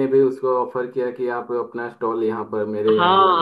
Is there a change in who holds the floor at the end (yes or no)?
yes